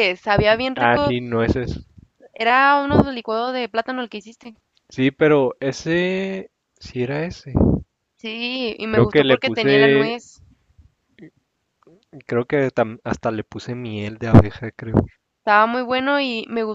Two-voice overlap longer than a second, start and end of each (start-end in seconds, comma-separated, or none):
8.8-10.2